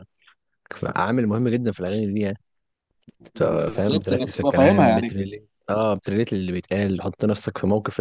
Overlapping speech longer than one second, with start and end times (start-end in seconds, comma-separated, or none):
3.4-5.1